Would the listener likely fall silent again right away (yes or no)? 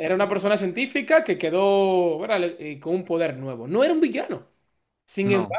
yes